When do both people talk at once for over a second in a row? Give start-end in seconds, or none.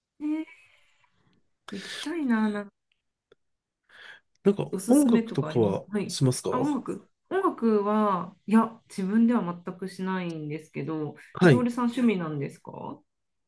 4.7-6.7